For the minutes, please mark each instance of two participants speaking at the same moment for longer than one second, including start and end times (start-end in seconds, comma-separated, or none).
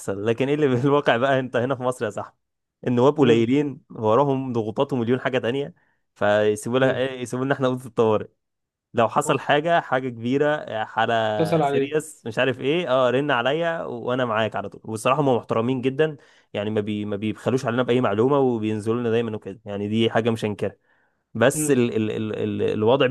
none